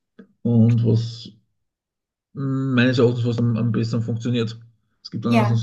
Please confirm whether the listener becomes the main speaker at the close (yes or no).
no